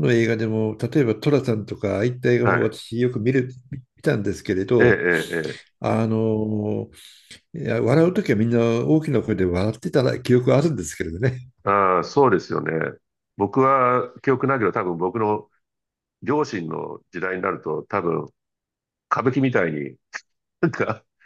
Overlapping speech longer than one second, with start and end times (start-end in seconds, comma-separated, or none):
none